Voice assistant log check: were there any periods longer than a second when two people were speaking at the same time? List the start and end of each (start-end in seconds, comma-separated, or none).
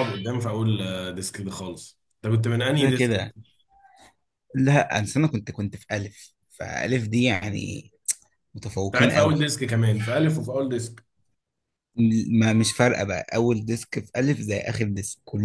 none